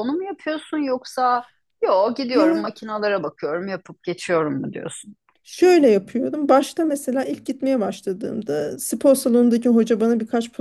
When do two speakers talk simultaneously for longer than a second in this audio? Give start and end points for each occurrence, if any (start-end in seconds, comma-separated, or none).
none